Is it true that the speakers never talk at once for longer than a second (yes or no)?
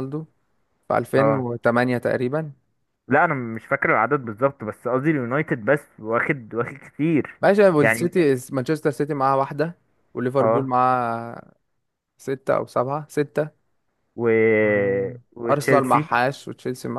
yes